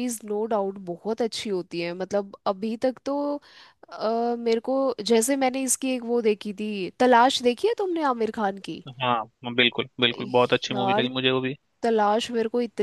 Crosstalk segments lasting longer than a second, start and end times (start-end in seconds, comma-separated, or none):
none